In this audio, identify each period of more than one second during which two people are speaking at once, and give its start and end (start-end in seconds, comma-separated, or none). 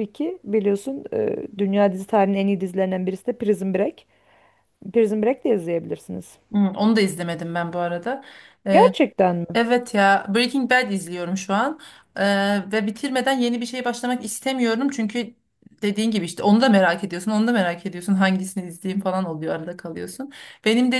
none